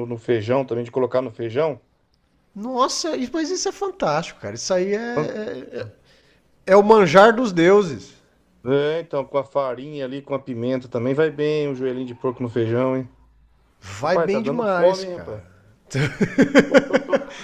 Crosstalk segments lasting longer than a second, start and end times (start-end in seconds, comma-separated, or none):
14.0-15.4